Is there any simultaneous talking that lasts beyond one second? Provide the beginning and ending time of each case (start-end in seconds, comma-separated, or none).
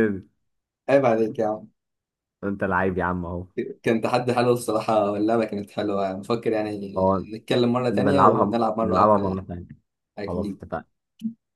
7.9-9.4